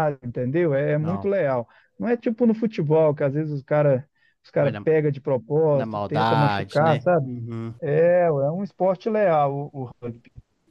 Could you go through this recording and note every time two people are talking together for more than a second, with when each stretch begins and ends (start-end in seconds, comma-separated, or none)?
5.7-7.3